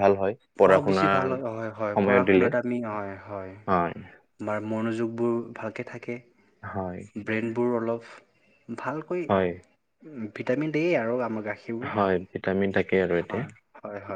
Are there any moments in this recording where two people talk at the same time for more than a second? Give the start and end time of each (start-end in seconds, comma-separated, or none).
0.7-2.5